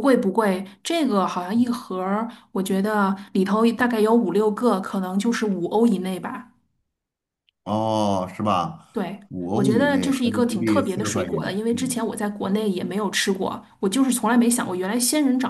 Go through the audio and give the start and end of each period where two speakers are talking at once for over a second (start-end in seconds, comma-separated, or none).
9.3-12.0